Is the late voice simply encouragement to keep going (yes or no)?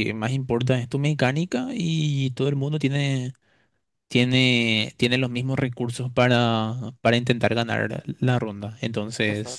yes